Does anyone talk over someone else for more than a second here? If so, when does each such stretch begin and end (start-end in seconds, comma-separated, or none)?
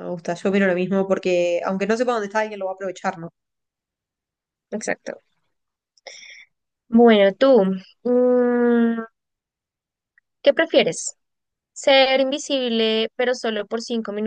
none